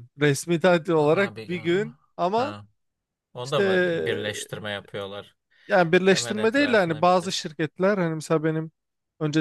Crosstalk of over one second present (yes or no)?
yes